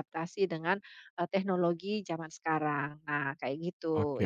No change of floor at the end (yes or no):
no